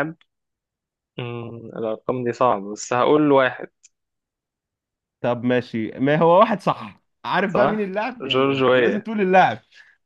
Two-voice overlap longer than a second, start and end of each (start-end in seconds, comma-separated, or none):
7.5-9.1